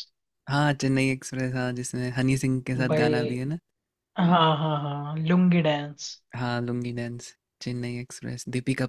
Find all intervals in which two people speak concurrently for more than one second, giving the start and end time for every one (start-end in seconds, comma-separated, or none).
none